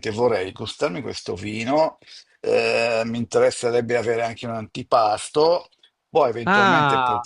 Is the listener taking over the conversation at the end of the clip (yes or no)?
yes